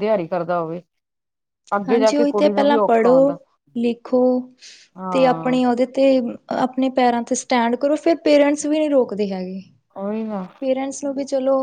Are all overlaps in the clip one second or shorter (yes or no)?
no